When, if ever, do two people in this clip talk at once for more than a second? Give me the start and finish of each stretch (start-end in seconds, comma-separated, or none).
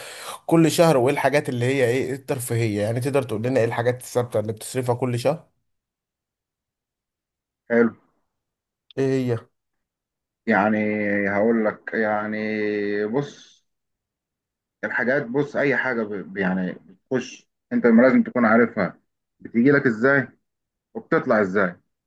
none